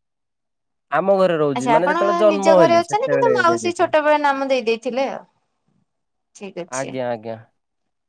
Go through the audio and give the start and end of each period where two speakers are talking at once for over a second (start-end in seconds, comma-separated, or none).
1.6-3.9